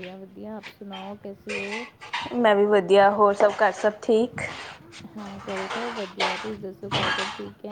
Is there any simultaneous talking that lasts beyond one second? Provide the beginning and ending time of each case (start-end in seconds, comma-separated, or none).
none